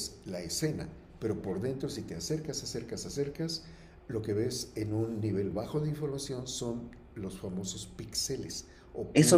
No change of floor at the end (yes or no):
no